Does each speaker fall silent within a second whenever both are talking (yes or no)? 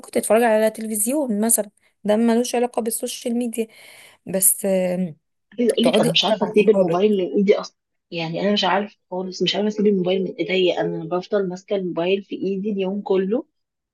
no